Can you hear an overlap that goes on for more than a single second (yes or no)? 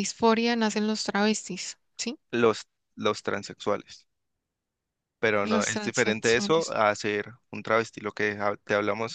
yes